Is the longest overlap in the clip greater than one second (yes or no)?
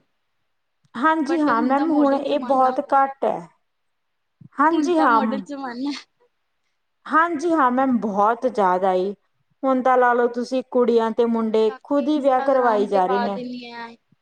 yes